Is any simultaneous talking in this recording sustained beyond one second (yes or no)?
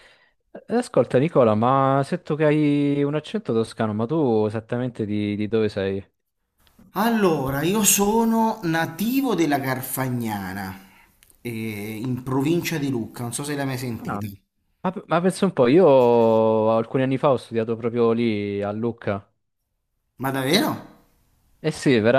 no